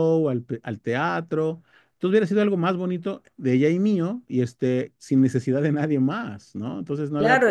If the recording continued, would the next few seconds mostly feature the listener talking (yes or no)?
yes